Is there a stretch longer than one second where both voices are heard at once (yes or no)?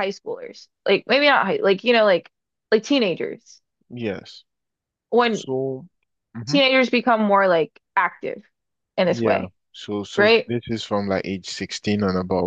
no